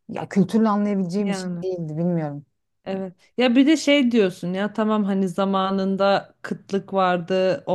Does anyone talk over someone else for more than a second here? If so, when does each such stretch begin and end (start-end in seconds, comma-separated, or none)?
none